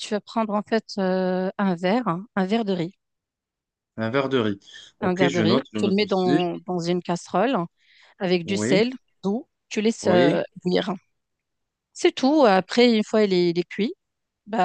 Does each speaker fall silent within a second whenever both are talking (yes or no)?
no